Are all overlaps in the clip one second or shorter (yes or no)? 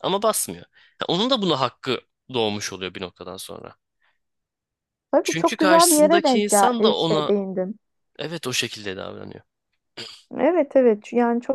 no